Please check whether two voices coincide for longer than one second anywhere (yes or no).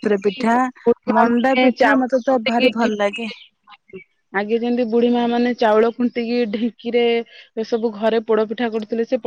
yes